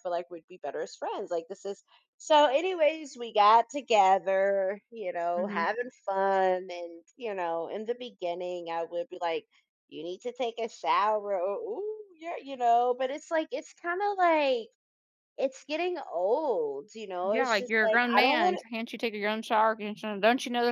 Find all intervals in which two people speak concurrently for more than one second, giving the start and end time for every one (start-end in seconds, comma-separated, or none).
17.2-18.6